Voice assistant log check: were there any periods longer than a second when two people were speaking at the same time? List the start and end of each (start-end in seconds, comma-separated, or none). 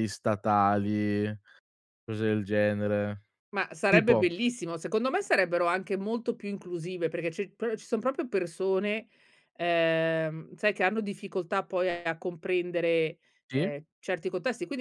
none